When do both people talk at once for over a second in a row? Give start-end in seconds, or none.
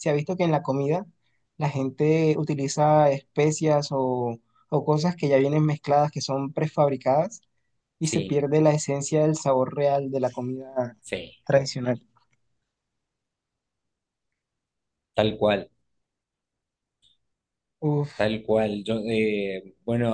none